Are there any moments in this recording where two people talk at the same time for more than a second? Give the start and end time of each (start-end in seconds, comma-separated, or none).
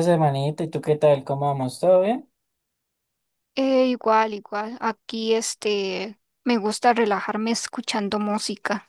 none